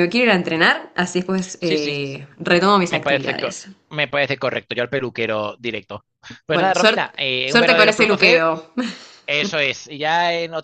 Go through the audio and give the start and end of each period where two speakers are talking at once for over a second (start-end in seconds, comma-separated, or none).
6.5-8.5